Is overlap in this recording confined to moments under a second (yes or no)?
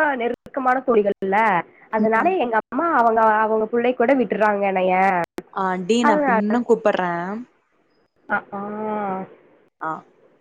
yes